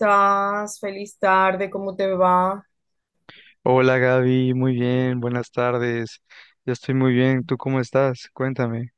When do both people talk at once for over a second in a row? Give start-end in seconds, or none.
none